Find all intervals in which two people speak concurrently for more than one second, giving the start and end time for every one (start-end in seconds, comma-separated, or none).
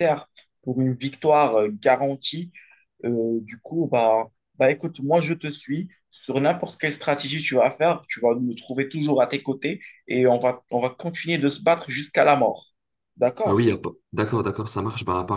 none